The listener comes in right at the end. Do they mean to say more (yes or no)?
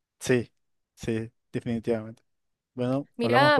yes